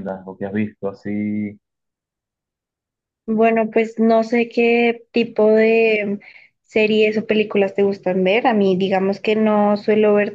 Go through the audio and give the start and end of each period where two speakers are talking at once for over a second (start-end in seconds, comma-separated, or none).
none